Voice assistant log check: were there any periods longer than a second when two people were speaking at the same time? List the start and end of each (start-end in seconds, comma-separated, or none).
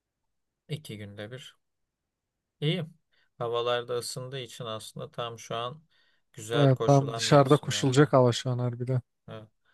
6.5-8.1